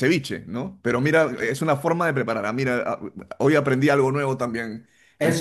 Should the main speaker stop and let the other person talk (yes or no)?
yes